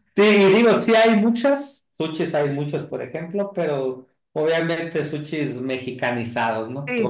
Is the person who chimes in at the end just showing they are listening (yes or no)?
yes